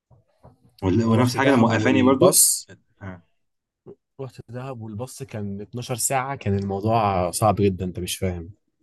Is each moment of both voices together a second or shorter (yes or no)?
no